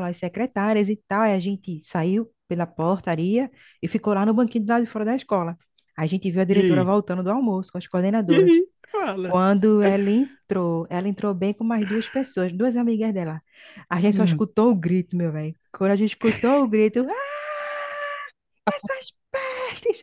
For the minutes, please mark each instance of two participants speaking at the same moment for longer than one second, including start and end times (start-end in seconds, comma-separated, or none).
none